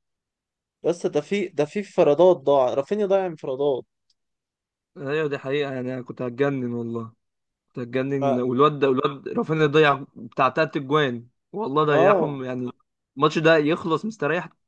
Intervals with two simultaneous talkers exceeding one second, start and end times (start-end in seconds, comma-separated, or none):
none